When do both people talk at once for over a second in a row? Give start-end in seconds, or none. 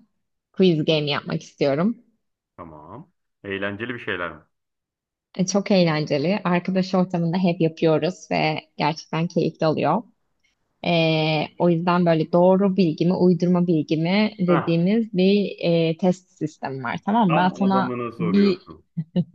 17.3-18.7